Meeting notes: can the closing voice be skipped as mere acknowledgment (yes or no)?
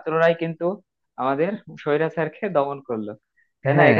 yes